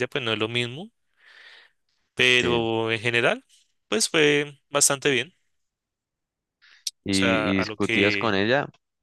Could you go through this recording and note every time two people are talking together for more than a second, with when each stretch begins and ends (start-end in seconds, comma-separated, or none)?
7.1-8.3